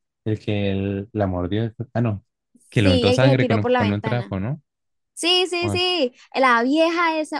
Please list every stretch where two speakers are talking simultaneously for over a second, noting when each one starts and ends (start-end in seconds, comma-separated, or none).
2.8-4.4